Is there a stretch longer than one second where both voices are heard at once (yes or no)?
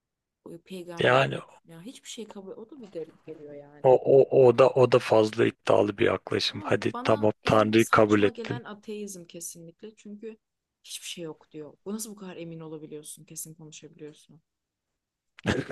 yes